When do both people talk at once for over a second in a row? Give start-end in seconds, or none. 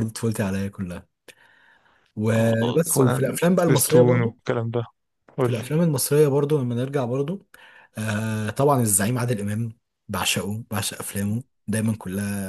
2.4-4.3